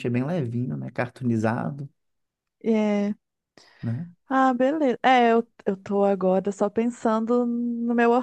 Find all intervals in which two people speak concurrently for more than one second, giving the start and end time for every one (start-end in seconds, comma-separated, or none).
none